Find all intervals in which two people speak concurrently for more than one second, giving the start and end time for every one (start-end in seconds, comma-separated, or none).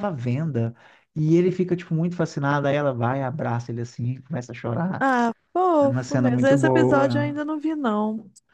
5.8-7.4